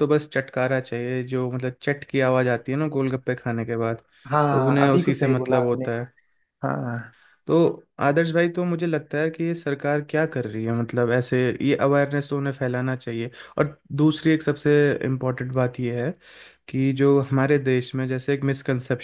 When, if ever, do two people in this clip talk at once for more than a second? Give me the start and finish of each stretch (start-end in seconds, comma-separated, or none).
4.5-5.8